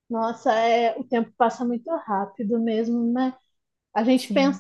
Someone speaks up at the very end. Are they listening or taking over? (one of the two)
listening